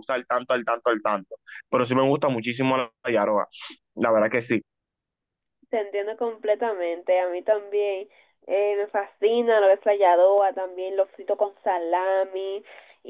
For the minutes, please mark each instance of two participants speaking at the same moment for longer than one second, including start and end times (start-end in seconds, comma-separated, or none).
none